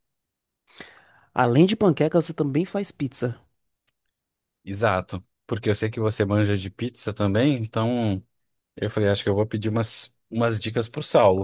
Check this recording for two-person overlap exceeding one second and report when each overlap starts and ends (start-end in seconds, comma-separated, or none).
none